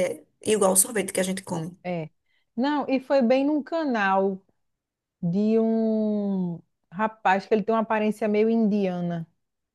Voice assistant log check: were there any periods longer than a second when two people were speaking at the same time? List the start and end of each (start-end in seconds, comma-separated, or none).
none